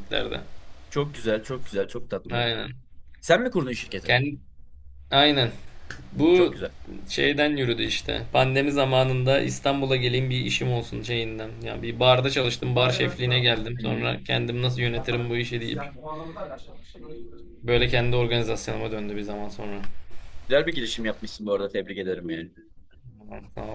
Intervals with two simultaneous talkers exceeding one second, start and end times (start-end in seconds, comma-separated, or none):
none